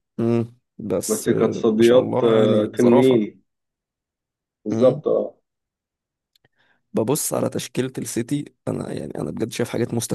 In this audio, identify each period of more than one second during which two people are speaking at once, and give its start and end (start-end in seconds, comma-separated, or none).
1.1-3.2